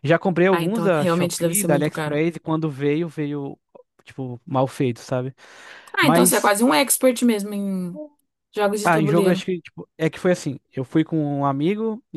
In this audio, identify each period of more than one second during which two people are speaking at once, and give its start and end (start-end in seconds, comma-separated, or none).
0.5-2.2